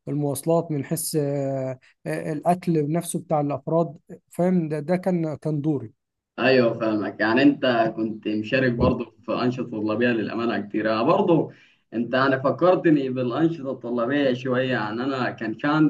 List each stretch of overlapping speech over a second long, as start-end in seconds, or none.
none